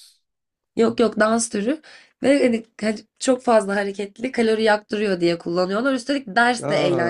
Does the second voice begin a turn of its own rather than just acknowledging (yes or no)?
no